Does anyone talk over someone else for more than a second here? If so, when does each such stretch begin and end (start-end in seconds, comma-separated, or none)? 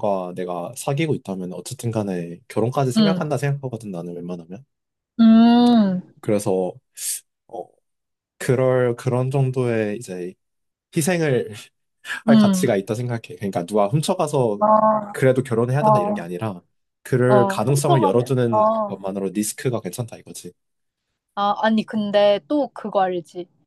17.3-19.0